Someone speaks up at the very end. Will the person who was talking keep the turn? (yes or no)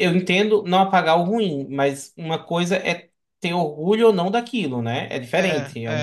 no